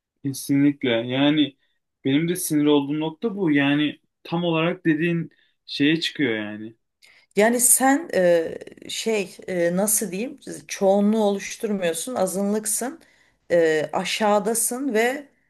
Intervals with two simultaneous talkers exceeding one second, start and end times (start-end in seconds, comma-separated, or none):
none